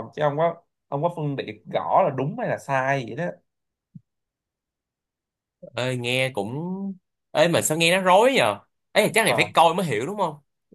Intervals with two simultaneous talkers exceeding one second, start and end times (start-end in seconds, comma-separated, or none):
none